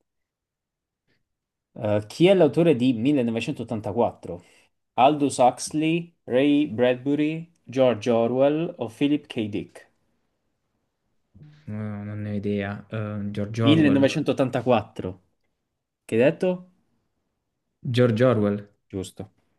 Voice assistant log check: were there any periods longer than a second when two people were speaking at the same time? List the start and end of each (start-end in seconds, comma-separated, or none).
none